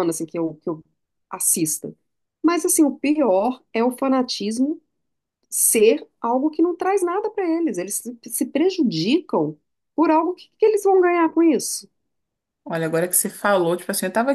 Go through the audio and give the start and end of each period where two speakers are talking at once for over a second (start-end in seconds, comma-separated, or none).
none